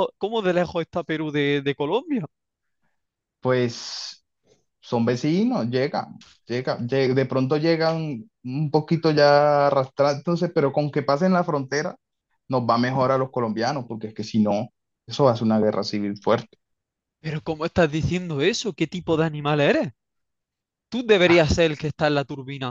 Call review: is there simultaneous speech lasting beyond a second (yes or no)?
no